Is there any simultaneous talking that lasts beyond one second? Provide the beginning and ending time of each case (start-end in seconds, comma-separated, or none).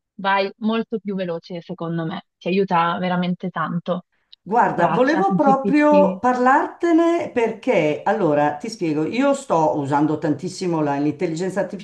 4.7-6.2